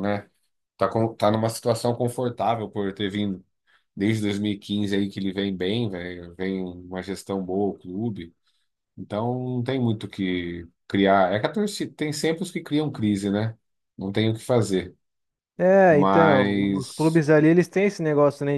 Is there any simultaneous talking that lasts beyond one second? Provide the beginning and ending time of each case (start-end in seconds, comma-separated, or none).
15.9-17.2